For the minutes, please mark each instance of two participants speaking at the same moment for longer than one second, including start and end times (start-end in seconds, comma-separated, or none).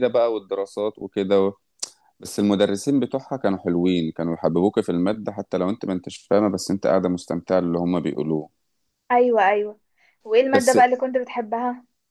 none